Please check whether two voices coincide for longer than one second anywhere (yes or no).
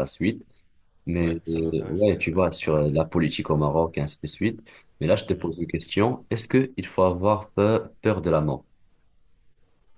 yes